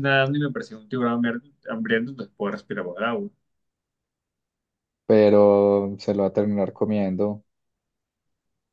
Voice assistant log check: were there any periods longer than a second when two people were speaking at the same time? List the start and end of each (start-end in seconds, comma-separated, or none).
none